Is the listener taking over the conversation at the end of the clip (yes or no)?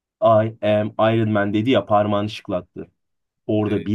no